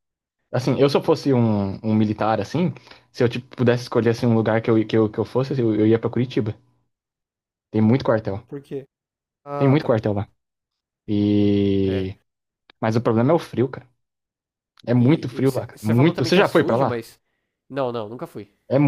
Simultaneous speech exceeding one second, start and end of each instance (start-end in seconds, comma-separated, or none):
14.9-17.0